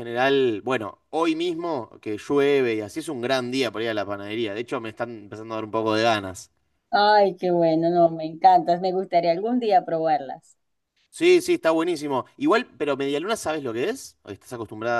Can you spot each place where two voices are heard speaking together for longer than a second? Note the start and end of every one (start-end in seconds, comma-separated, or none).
none